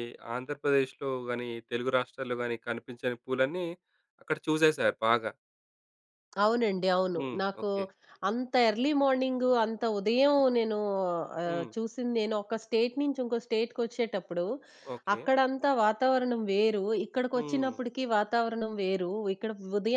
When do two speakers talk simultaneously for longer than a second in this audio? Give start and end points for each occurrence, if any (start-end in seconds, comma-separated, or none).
none